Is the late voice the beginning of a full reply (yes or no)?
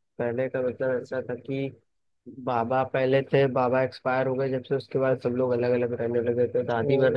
no